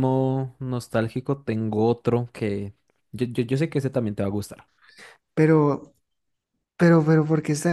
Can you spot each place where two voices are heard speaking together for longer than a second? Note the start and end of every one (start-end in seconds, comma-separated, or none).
none